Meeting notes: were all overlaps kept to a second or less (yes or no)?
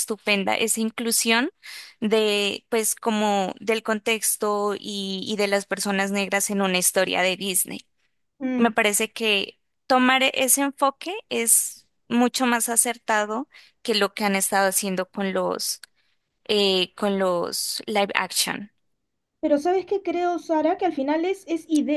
yes